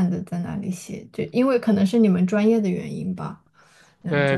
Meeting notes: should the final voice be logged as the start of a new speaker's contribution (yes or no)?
yes